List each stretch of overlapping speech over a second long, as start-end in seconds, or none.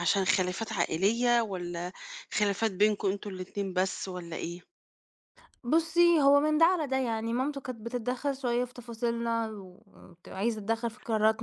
none